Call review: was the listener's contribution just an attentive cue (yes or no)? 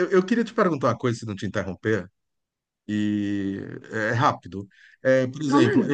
yes